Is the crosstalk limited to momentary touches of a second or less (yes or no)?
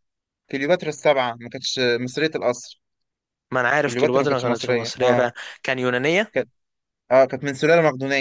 no